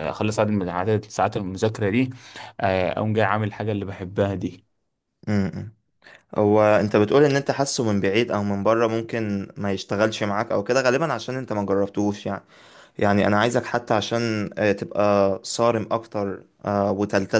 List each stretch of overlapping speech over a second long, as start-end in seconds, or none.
none